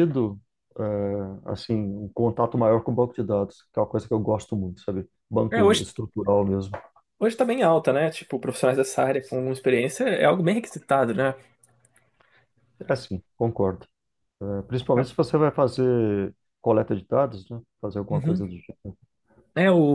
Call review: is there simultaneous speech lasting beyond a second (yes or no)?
no